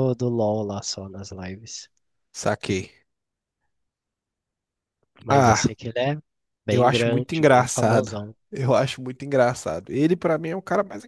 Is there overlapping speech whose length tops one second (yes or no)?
yes